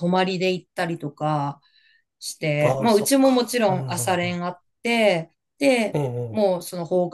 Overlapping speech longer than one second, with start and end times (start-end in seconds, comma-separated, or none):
2.6-4.4